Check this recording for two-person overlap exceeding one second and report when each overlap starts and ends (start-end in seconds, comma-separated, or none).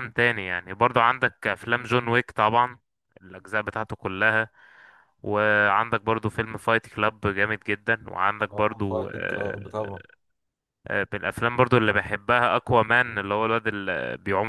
8.5-10.0